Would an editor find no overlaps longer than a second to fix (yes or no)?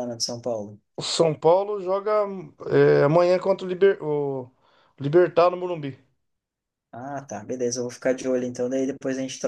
yes